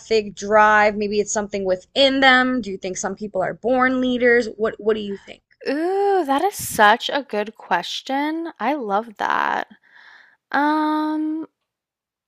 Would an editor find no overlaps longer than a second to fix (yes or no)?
yes